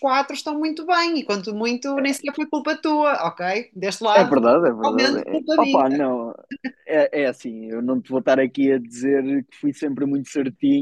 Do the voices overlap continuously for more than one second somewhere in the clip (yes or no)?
yes